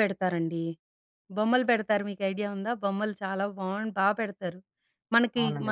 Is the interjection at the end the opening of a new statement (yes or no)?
no